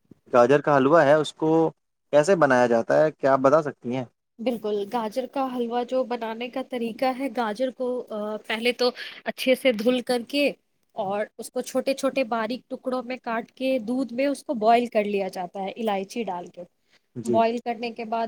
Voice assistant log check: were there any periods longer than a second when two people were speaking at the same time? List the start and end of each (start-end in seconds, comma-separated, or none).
none